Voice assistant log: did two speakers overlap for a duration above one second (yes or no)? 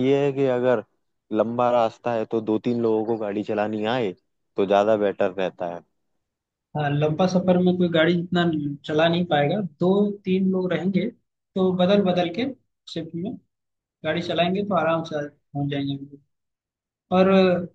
no